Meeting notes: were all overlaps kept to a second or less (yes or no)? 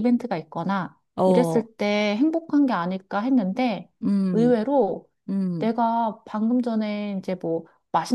yes